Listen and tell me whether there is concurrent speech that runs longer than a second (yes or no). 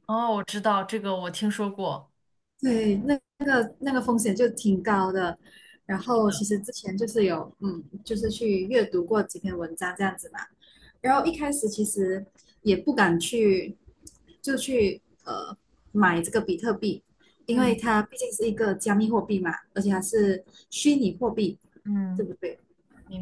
no